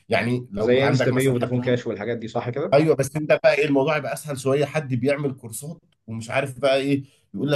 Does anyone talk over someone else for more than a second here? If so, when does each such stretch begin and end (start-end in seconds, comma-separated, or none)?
0.6-1.8